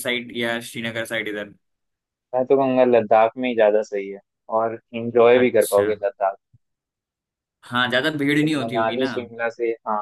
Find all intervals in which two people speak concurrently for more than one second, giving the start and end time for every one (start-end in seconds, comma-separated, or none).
none